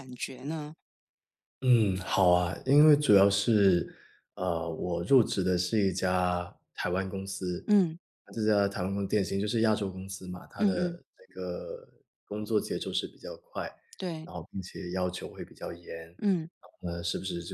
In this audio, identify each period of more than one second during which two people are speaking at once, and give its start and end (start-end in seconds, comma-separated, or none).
none